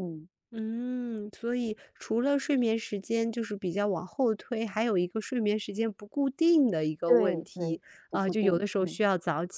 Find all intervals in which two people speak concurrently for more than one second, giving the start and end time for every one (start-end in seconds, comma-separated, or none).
7.1-9.0